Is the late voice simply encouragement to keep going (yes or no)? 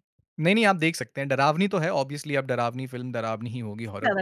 yes